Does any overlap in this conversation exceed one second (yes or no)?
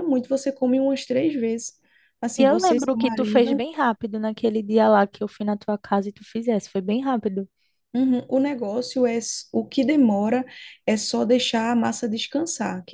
yes